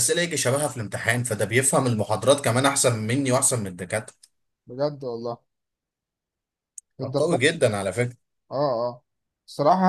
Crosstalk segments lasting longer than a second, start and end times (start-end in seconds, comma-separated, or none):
none